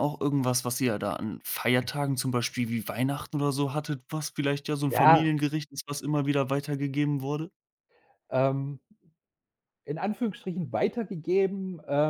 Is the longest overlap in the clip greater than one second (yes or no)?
no